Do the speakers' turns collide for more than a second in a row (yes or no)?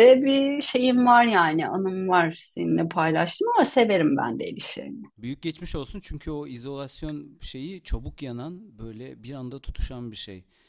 no